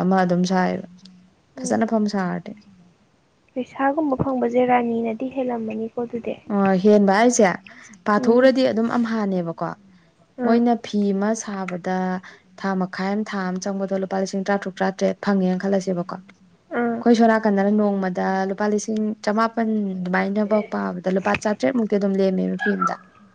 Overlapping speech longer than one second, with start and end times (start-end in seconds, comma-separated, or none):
none